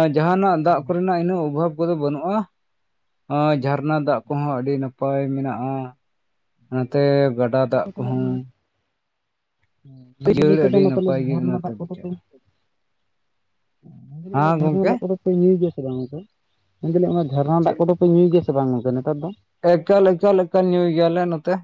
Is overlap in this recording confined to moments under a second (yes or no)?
no